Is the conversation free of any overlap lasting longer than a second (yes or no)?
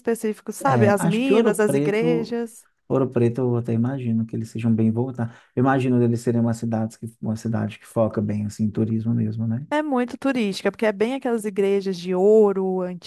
no